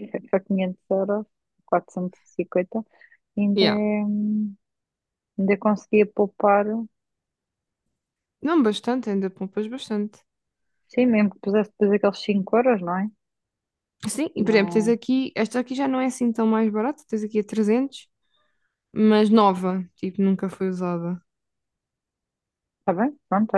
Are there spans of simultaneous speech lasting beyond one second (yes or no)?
no